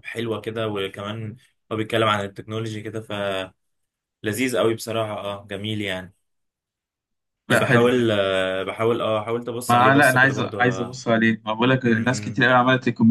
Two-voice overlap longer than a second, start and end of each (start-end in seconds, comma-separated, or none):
9.7-11.0